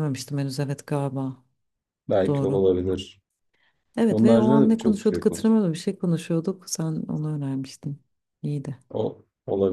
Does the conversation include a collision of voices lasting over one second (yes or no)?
yes